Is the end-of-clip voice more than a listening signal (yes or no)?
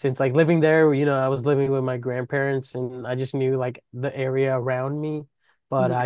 no